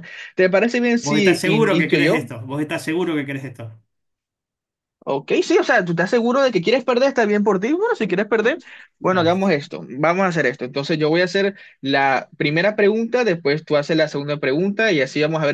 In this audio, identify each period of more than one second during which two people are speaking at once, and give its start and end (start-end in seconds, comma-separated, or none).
1.0-2.3